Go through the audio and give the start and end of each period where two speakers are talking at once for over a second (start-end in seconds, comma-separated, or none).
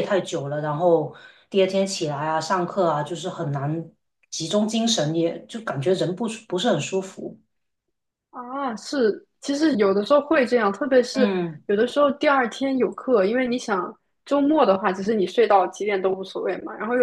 none